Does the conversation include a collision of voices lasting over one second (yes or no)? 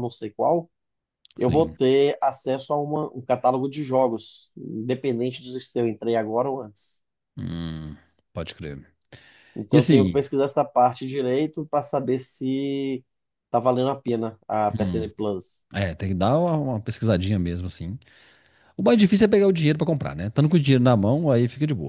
no